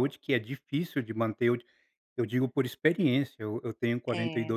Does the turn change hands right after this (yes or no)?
no